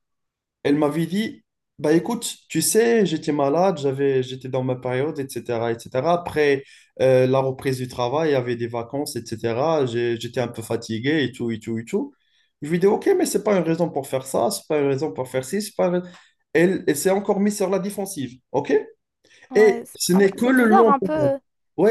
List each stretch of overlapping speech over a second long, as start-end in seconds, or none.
19.6-21.3